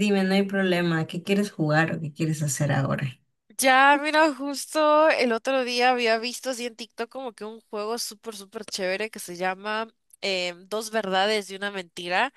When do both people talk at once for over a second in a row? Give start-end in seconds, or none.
none